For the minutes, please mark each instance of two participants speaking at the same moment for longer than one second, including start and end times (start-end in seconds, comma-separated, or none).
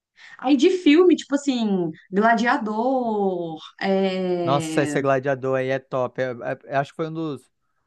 none